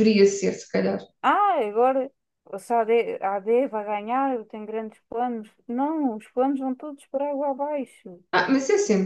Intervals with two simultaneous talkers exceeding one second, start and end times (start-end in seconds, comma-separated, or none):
none